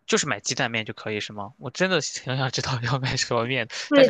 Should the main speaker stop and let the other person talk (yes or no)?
yes